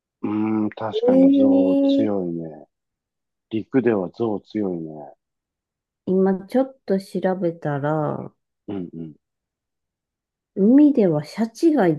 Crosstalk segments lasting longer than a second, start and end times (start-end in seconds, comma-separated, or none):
0.9-2.3